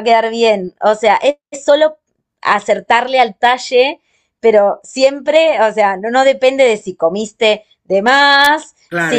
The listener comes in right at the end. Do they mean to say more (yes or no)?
yes